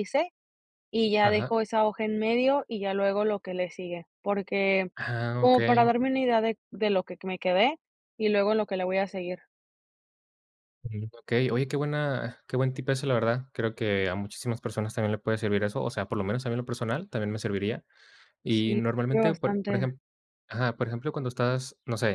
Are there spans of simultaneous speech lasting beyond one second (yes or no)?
yes